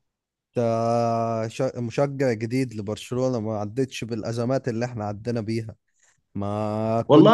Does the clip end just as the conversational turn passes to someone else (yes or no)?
yes